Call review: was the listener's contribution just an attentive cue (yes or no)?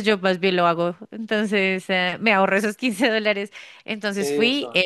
yes